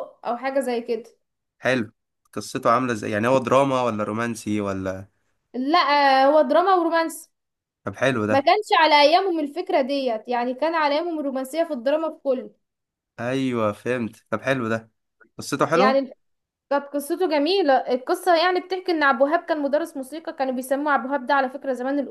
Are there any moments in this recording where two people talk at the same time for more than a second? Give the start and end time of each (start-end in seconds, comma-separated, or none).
none